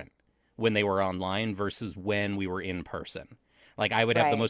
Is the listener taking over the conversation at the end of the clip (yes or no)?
no